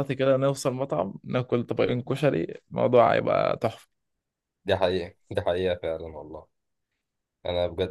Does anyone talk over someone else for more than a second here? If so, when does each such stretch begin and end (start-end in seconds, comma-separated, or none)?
none